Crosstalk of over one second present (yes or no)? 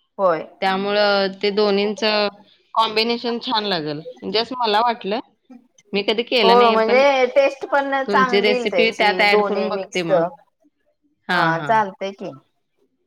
yes